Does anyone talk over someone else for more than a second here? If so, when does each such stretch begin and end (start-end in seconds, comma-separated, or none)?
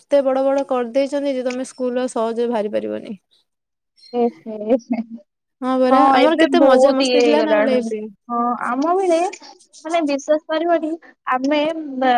5.9-7.9